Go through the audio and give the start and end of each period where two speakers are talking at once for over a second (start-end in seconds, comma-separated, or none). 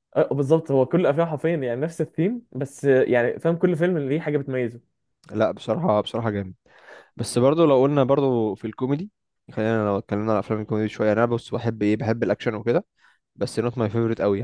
none